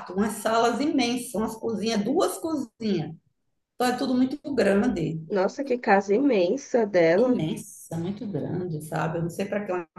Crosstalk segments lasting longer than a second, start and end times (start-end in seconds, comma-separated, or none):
none